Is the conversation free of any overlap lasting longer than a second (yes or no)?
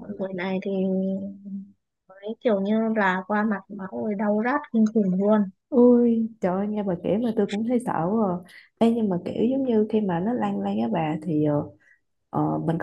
yes